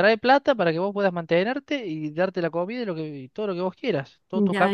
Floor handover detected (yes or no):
yes